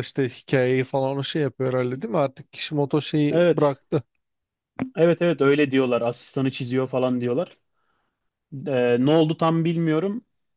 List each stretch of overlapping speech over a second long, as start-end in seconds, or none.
none